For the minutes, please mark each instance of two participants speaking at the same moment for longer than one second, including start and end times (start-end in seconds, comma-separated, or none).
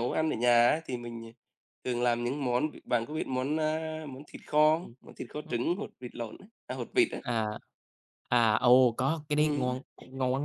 none